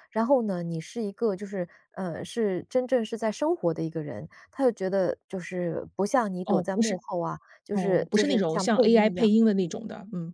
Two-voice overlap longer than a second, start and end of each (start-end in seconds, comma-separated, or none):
7.7-9.3